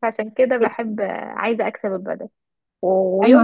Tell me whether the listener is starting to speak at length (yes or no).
yes